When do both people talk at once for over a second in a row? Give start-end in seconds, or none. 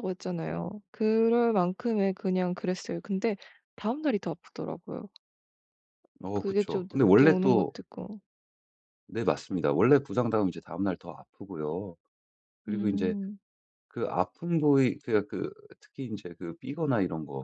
6.3-7.8